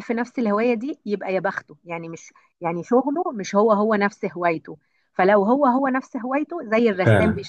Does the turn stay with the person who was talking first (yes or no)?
yes